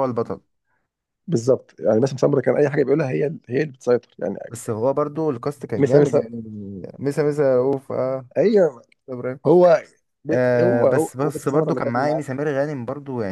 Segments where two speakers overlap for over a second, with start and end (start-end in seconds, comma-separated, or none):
10.3-12.2